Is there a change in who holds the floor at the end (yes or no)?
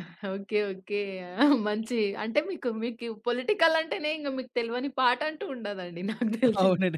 yes